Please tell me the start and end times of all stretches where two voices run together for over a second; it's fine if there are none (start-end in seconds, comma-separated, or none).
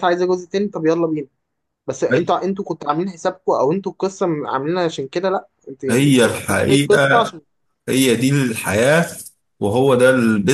5.9-7.3